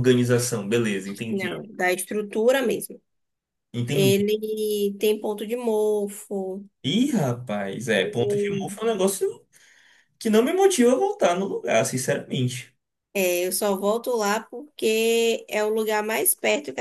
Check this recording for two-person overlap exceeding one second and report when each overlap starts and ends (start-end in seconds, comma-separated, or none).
none